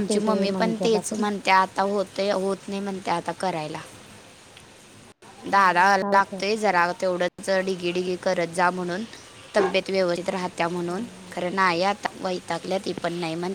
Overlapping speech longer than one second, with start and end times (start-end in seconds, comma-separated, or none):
5.5-6.7